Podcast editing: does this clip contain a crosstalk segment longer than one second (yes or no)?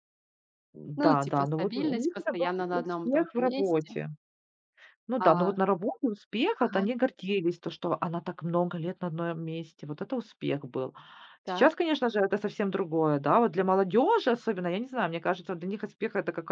yes